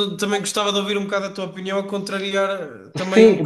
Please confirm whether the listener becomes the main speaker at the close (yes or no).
yes